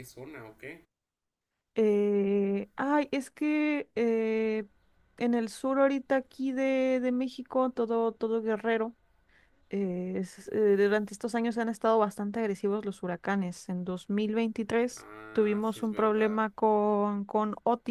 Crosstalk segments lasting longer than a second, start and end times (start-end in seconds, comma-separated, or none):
15.0-16.4